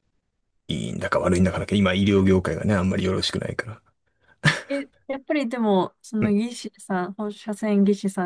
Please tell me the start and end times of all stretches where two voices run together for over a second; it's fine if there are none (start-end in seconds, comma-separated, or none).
none